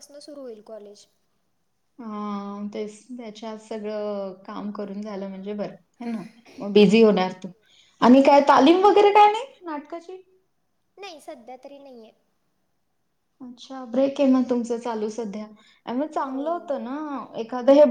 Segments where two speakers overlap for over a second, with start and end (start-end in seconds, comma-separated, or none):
none